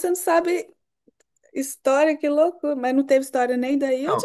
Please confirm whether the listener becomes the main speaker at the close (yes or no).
yes